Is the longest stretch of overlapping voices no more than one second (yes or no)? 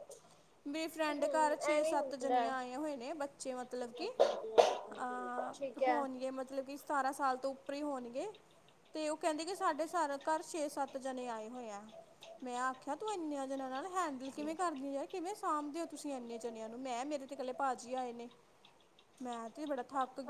no